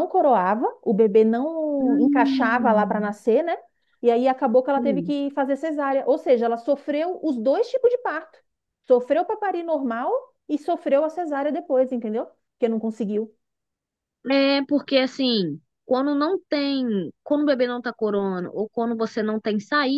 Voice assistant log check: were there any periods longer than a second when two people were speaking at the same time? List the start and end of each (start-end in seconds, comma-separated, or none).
1.8-3.1